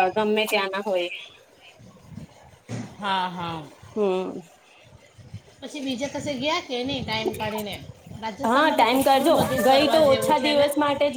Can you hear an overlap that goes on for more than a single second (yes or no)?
yes